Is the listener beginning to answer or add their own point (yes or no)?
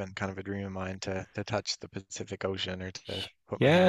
yes